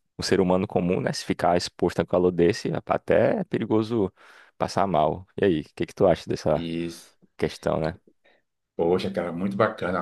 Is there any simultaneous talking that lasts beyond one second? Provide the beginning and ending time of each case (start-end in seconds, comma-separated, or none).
none